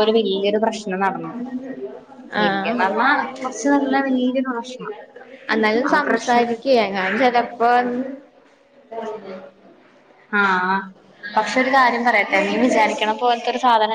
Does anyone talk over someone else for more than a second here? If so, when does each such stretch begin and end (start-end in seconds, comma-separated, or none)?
none